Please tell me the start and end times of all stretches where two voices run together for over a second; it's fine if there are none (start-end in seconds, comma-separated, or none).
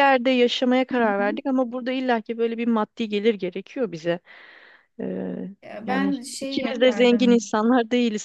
5.9-7.5